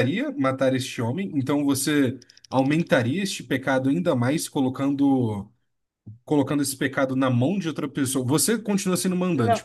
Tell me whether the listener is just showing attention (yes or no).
yes